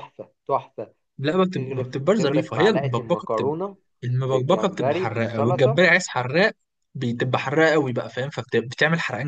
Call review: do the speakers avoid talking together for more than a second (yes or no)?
no